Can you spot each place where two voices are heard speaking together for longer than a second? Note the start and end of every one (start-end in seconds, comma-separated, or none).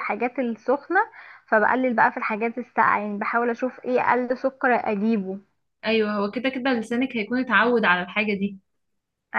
none